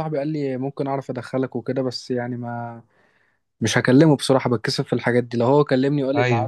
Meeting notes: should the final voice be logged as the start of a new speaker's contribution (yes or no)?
no